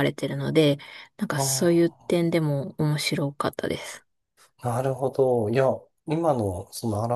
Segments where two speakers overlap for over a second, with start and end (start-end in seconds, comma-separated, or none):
none